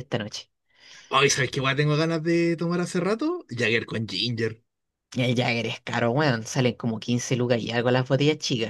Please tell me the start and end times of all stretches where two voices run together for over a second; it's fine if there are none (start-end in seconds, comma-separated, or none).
none